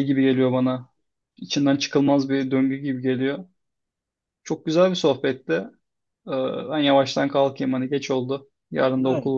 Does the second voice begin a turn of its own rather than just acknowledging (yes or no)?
yes